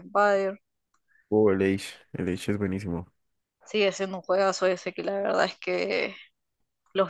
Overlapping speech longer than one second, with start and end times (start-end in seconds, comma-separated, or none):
none